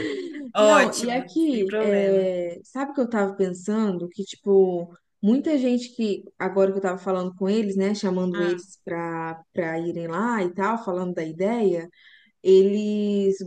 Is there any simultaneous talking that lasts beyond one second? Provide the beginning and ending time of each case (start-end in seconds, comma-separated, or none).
0.6-2.3